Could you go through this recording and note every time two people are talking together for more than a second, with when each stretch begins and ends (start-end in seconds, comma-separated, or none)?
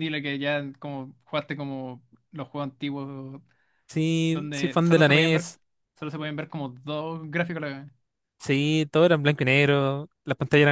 4.3-5.5